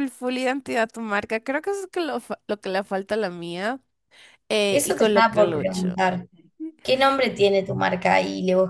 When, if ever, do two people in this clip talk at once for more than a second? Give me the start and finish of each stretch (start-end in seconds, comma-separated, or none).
4.7-6.0